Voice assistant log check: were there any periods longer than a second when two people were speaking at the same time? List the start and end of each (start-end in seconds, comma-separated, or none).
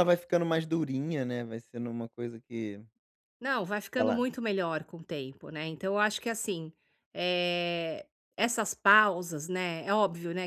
none